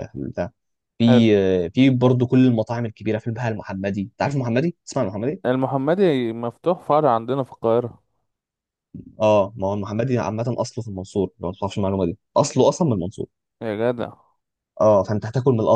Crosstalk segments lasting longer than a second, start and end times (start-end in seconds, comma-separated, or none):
none